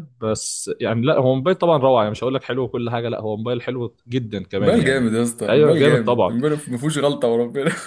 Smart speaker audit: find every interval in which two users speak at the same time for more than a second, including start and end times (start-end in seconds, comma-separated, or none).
4.6-6.4